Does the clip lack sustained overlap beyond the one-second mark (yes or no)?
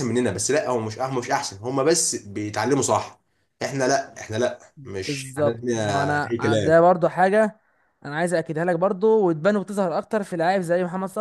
no